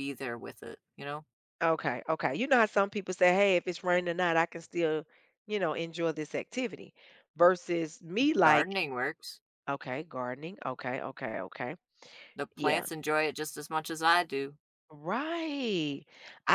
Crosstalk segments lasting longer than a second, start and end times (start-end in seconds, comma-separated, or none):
none